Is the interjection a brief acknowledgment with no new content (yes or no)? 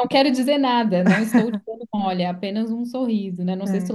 yes